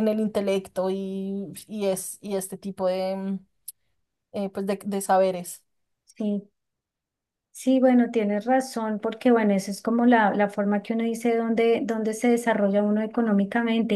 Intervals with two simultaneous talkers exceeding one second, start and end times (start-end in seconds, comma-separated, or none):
none